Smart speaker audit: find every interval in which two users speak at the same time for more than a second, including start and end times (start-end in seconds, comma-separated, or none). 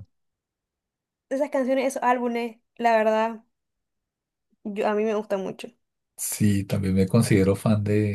none